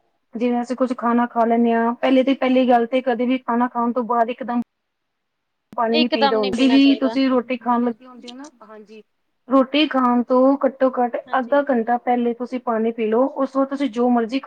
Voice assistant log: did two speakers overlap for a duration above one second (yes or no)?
yes